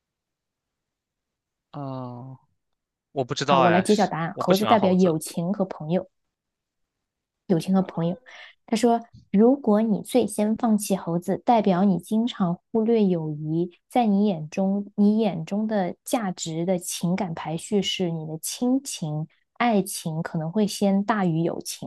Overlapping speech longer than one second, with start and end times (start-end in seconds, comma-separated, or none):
3.5-5.1